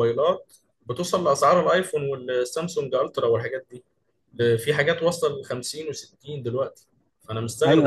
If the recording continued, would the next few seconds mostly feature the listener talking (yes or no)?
yes